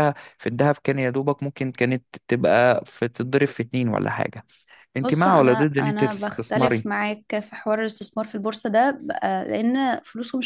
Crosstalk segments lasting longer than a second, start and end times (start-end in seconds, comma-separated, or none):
5.0-6.9